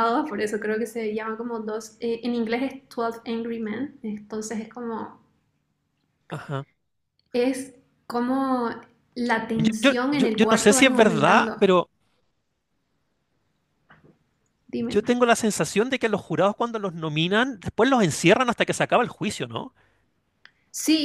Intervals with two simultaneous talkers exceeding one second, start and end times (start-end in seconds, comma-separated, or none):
9.5-11.6